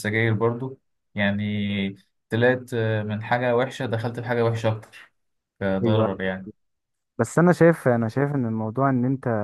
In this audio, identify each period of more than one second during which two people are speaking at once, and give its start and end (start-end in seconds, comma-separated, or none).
none